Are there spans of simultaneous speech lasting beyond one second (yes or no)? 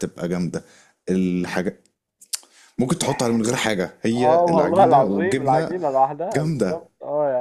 yes